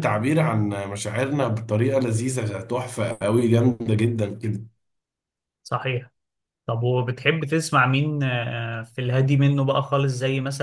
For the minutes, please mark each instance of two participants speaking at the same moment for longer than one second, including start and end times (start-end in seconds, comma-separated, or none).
none